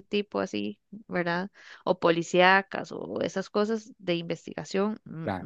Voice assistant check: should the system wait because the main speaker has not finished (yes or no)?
yes